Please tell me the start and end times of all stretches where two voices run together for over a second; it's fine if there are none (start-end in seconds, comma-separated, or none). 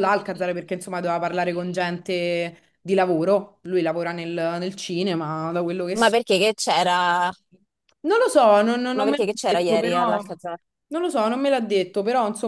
9.0-10.2